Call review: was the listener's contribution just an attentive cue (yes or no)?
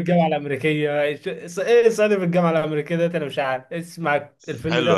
no